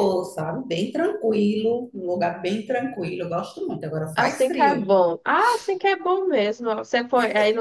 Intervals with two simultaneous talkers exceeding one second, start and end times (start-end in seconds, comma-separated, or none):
none